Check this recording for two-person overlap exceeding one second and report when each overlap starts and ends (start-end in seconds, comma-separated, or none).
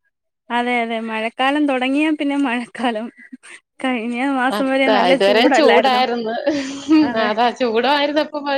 none